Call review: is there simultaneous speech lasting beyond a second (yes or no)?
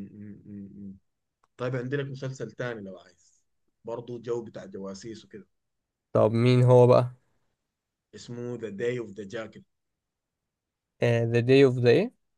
no